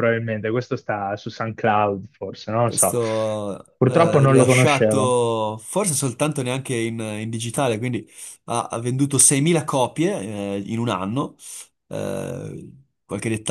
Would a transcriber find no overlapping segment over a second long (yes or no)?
no